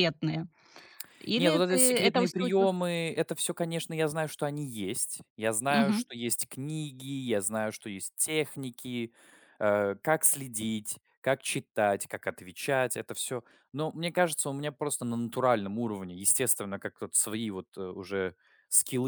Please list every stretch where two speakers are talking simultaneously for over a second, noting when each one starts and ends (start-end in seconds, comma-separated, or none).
1.4-2.7